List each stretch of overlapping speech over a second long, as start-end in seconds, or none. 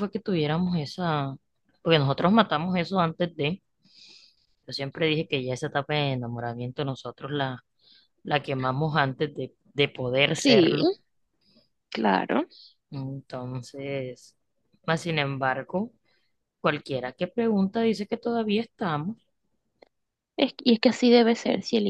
none